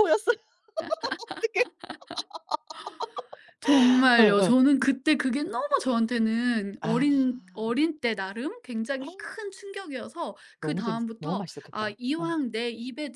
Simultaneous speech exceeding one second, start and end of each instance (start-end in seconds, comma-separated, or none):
10.6-12.3